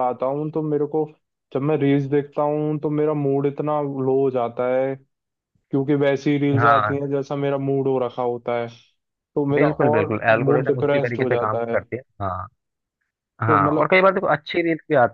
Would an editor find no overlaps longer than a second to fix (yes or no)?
no